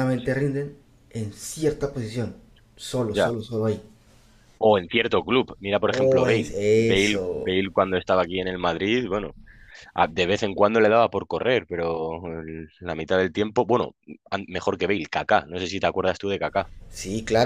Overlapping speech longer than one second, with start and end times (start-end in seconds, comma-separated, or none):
5.9-7.5